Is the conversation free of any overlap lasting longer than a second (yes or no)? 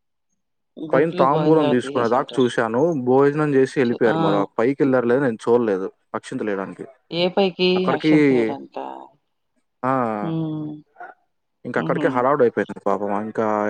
no